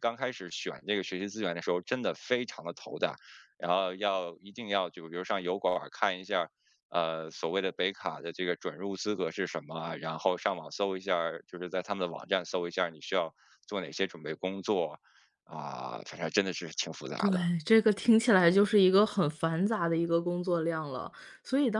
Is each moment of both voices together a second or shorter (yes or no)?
yes